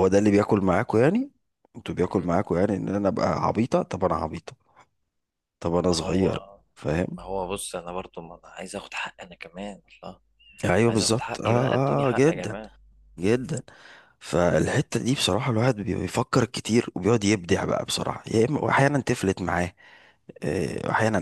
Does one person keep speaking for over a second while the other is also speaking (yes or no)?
yes